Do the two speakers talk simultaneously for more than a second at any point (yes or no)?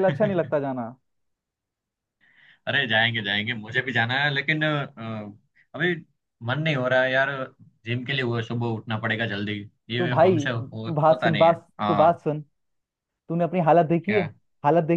yes